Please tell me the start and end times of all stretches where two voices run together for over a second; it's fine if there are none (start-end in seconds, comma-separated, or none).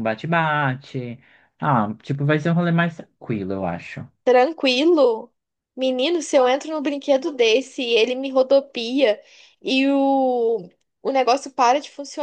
none